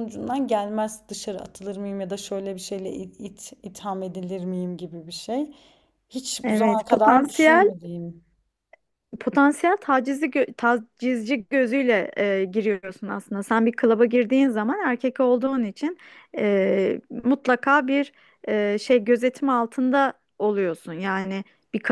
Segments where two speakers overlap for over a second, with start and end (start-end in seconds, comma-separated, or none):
6.4-7.7